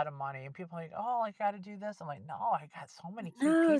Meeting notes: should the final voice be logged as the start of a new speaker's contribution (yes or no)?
yes